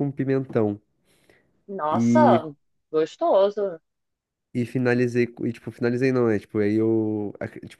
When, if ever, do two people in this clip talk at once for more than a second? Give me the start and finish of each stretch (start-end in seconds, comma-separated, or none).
none